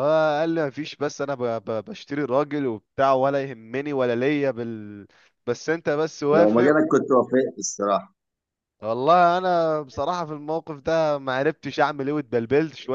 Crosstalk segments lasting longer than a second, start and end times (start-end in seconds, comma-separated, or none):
none